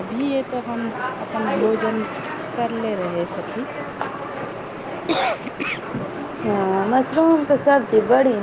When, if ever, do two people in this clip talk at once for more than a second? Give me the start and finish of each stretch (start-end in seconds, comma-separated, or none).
none